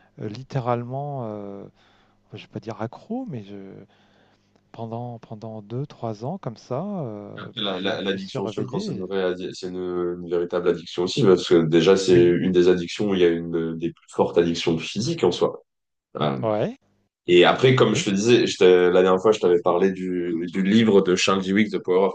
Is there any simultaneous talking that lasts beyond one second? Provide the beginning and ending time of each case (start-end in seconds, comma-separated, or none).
7.4-9.1